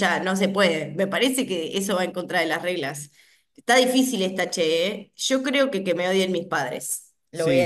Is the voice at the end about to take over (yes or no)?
yes